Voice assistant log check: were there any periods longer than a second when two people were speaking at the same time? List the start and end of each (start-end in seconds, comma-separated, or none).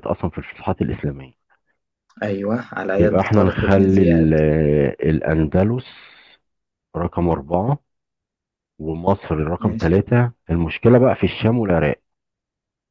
3.0-4.3